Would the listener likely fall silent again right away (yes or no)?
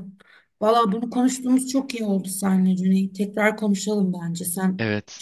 no